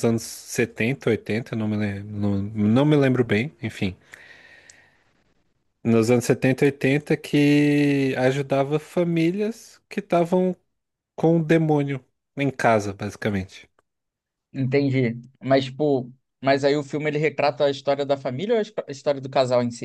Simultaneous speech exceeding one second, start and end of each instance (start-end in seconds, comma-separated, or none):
none